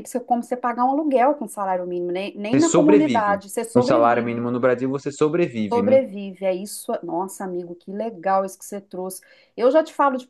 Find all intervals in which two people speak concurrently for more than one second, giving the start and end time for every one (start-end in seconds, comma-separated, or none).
2.5-4.5